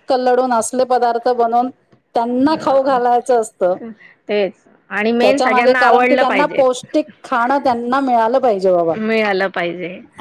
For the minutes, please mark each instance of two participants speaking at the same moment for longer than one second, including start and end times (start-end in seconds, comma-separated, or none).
5.2-6.6